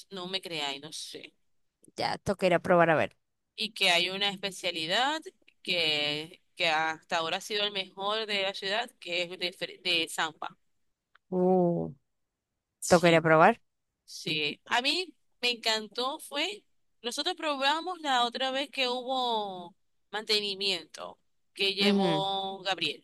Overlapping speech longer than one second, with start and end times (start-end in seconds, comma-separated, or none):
none